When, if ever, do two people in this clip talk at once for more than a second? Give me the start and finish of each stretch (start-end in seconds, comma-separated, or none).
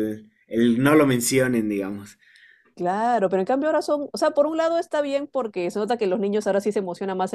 none